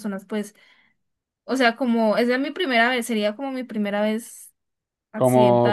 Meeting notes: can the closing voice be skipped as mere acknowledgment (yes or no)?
no